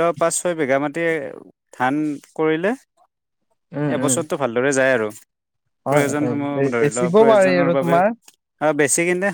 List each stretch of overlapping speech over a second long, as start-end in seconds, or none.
5.9-8.0